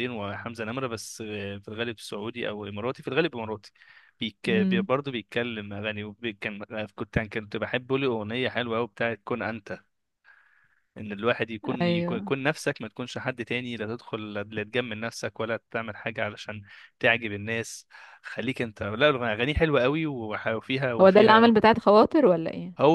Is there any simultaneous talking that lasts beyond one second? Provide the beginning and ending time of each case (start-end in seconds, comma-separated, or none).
none